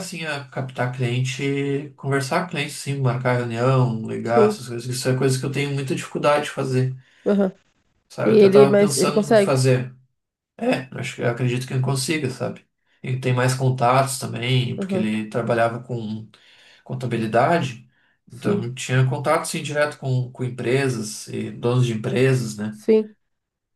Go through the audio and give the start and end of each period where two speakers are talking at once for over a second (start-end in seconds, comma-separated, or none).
8.2-9.6